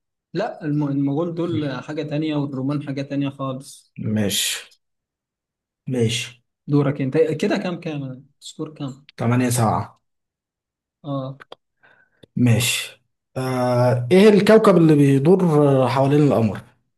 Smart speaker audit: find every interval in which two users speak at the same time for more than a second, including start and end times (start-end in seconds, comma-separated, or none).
none